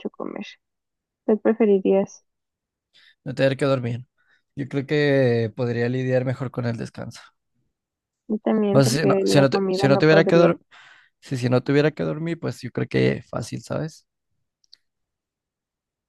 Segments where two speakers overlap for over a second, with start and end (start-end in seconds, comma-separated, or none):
8.7-10.5